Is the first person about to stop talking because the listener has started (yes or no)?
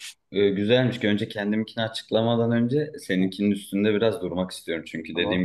no